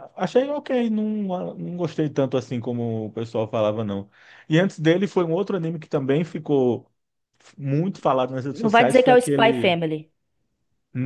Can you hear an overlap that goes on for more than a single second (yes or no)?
yes